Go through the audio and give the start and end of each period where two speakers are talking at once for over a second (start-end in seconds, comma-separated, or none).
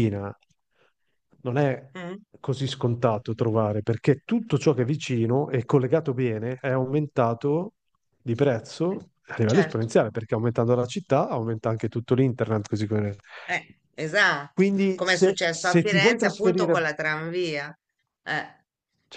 14.5-16.8